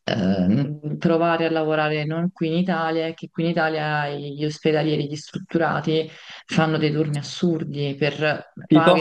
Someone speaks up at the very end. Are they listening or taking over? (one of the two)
listening